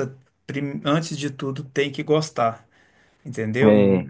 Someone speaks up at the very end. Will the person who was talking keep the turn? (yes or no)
yes